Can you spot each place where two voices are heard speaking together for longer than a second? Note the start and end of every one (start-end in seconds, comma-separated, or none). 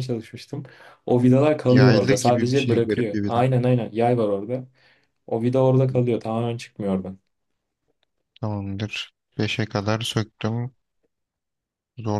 1.7-3.5